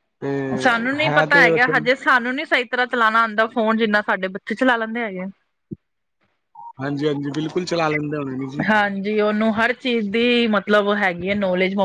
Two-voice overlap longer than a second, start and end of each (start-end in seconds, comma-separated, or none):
none